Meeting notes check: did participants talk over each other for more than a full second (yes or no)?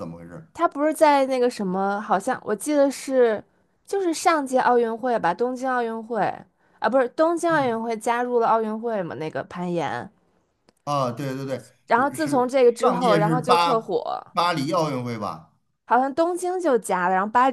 yes